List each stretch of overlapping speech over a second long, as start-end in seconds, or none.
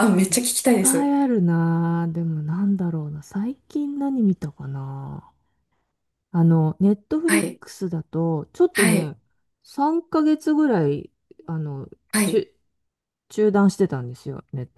none